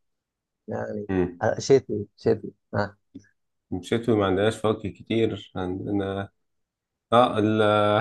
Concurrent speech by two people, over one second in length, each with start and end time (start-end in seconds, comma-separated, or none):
none